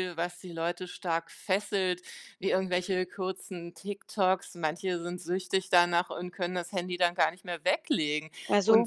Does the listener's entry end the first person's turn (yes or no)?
no